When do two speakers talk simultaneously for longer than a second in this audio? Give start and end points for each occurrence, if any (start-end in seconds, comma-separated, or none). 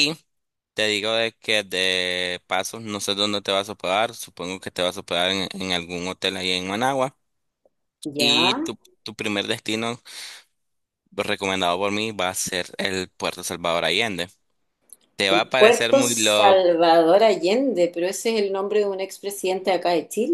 15.3-16.6